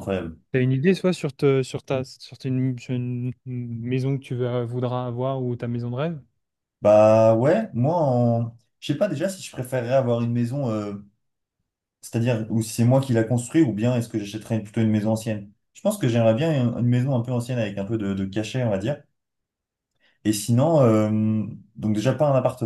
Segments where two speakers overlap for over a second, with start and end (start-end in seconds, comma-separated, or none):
none